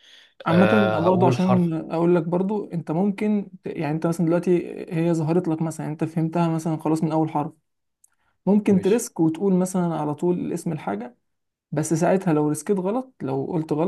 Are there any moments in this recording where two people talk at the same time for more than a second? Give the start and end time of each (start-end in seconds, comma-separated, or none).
0.5-1.7